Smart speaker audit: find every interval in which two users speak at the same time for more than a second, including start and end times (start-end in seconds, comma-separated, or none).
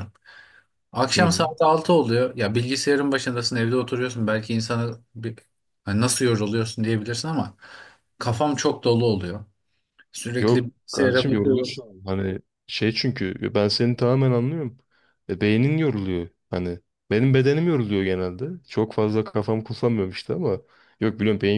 10.4-11.8